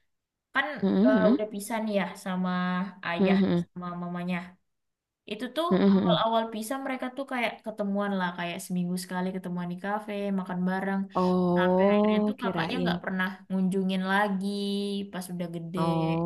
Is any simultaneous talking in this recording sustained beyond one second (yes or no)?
yes